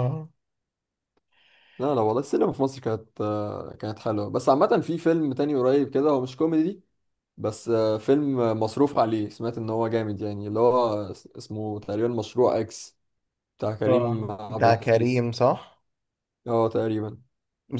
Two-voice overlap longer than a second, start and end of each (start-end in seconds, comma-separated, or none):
13.9-15.2